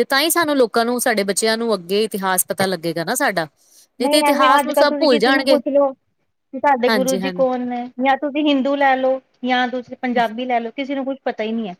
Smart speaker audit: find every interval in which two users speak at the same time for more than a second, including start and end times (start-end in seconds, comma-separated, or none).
4.3-5.6